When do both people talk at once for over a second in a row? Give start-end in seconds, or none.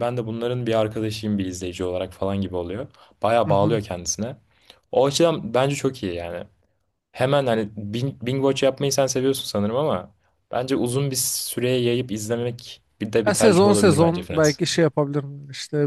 13.3-14.6